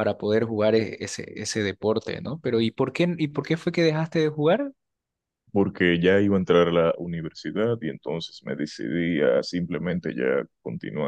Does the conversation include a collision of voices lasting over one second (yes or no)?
no